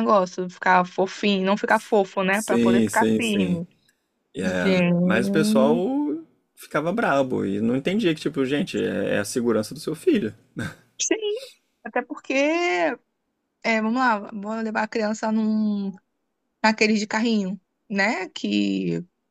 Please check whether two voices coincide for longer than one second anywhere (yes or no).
yes